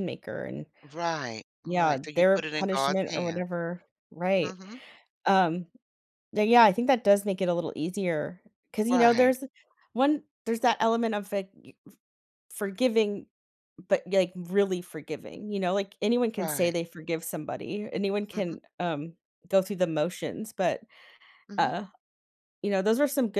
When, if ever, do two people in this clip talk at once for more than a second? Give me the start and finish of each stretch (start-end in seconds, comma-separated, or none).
1.6-3.4